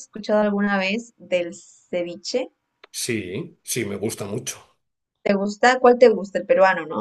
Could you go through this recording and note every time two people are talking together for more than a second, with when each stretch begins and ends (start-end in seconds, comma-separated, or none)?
none